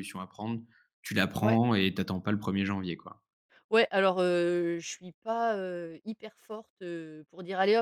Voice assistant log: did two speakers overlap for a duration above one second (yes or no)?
no